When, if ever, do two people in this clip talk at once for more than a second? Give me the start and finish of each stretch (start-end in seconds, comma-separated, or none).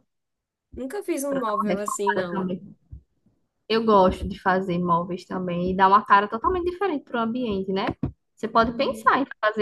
1.3-2.5